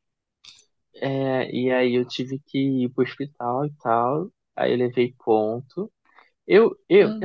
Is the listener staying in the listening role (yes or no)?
yes